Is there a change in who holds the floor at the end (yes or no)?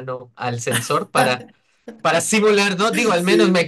no